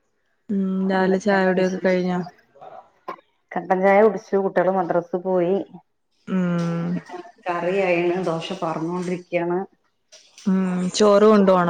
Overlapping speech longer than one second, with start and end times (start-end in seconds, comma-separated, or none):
1.0-2.2